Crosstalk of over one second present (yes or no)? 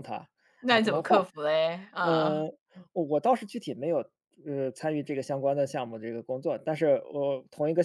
no